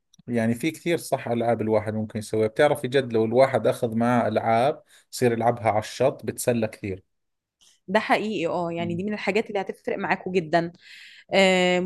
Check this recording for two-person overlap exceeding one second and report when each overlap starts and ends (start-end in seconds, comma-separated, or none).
none